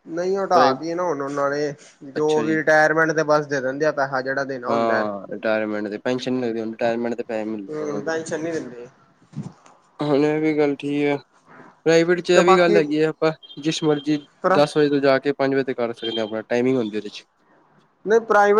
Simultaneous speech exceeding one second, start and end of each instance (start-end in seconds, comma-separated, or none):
none